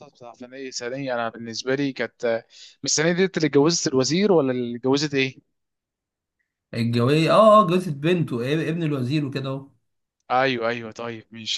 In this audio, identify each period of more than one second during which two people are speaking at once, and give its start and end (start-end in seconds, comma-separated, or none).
none